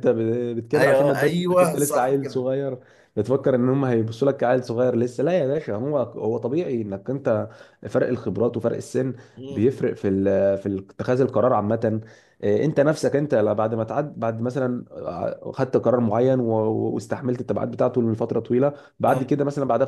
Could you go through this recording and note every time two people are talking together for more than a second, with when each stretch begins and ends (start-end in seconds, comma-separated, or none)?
0.8-2.5